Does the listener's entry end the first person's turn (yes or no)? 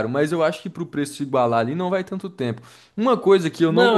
yes